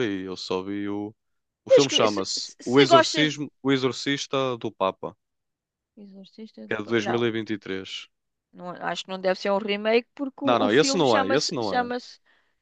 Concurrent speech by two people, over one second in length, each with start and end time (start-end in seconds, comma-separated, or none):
1.7-3.3, 10.4-11.9